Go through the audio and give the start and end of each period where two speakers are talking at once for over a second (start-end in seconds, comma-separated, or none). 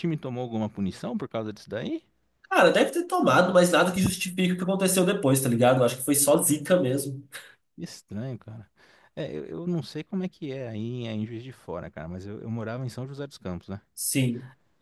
none